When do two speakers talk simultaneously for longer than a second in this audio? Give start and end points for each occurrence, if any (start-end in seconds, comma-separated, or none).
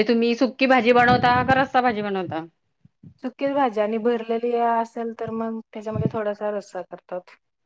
none